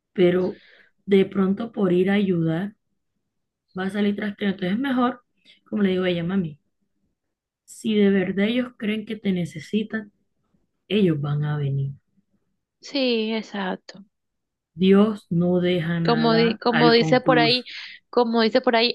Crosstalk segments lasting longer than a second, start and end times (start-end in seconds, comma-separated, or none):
16.0-17.6